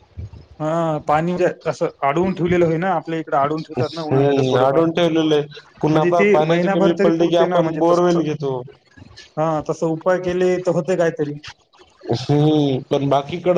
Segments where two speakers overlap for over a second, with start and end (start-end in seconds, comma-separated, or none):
5.9-8.2